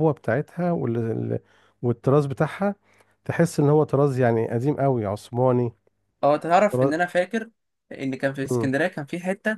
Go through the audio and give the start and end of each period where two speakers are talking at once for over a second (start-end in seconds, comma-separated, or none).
none